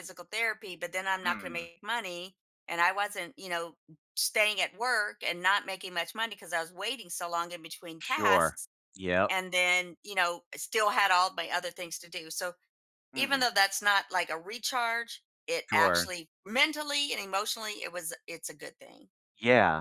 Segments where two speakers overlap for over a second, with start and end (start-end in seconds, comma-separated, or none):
none